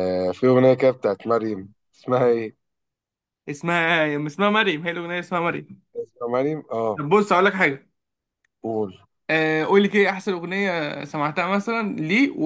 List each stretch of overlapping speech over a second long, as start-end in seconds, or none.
none